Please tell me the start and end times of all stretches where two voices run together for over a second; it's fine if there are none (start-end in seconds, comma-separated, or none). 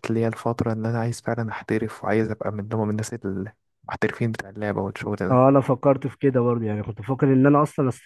none